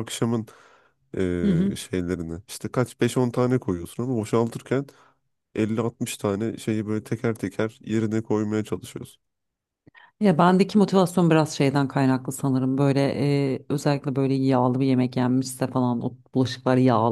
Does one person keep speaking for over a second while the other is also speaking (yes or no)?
no